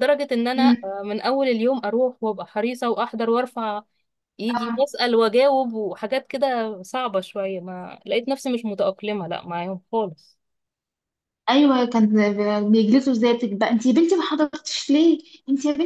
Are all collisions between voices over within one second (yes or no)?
yes